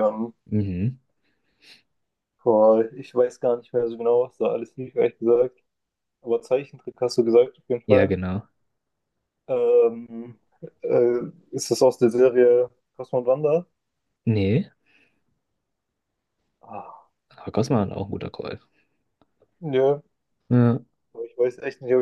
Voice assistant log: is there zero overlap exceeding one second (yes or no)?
yes